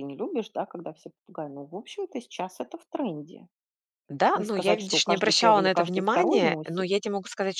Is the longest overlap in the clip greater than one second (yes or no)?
yes